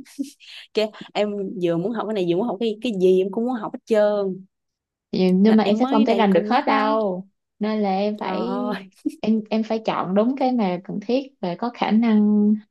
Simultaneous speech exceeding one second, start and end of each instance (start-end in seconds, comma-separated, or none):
5.5-7.0